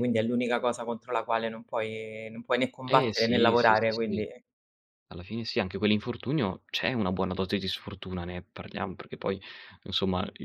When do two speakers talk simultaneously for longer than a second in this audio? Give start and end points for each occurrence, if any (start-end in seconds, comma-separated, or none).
2.9-4.2